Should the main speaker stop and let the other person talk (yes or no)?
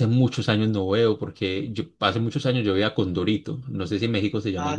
yes